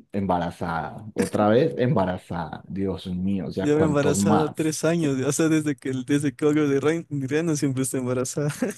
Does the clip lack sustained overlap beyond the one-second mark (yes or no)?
no